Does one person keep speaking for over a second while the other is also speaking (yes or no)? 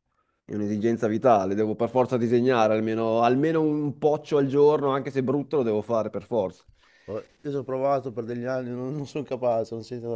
no